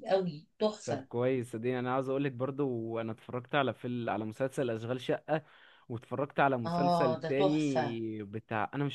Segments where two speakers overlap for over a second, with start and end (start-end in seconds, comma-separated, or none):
6.7-8.0